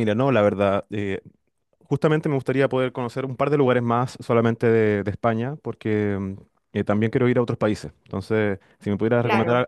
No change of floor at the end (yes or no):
yes